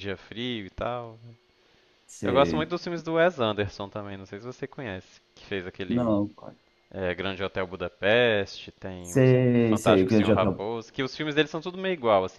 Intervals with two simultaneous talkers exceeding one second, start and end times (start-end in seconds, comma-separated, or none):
9.0-10.6